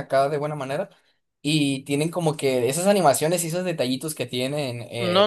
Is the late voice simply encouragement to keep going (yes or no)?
no